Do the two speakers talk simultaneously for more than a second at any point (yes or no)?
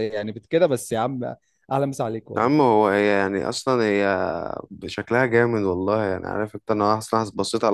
no